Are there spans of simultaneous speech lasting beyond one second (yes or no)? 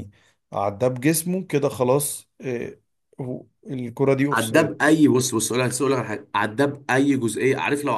no